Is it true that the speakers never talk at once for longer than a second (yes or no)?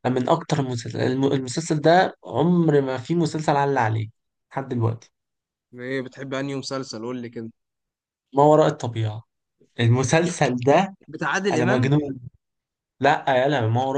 yes